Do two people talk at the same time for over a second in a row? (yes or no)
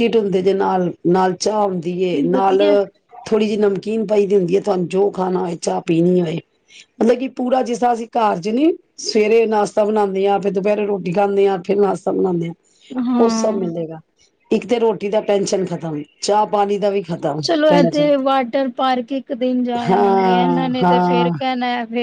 yes